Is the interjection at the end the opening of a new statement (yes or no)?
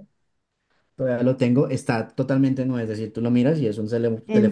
yes